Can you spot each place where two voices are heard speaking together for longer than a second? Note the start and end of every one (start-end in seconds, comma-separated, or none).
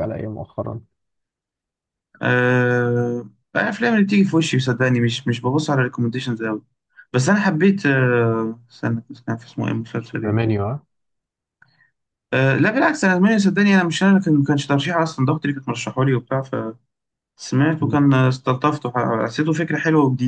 none